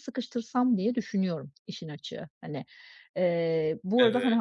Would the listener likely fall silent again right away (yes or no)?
yes